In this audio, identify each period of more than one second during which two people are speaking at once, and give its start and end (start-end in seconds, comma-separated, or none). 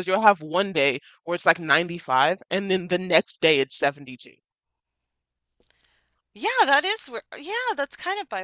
none